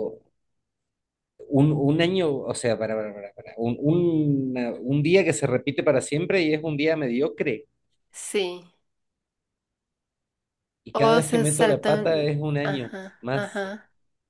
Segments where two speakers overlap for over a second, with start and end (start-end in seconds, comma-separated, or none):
10.9-13.6